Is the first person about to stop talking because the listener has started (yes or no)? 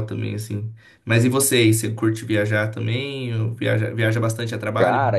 yes